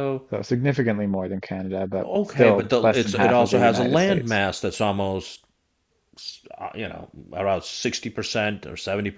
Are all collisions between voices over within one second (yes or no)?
no